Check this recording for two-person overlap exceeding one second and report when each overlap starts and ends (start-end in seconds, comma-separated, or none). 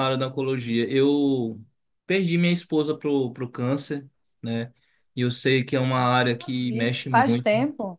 5.9-7.5